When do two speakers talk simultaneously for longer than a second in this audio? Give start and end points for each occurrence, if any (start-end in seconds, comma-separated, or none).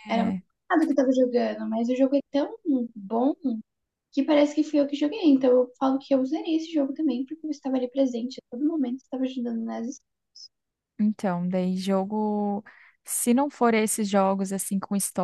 none